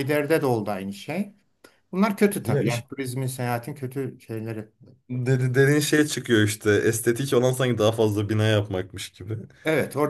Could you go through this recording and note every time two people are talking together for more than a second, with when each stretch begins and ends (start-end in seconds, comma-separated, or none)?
none